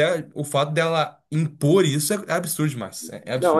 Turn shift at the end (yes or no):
yes